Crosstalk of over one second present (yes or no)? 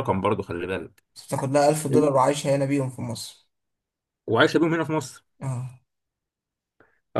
no